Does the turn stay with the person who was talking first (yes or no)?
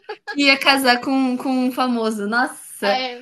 no